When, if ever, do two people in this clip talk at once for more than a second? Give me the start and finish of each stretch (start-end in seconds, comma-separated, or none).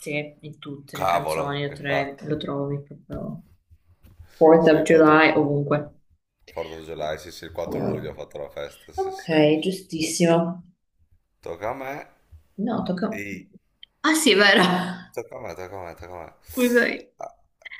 0.9-2.2